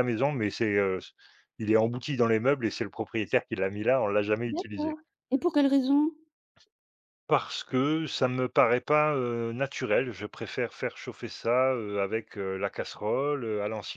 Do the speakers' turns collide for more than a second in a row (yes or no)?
no